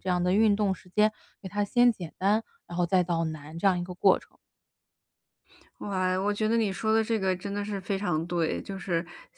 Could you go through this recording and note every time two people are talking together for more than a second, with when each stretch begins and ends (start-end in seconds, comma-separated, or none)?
none